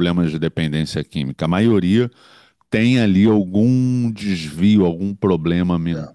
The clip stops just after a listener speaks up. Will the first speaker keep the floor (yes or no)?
yes